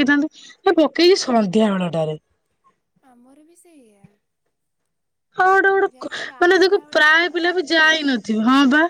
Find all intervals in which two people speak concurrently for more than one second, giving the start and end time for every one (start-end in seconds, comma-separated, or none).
5.9-8.2